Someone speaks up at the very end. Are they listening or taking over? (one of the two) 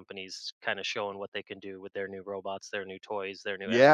taking over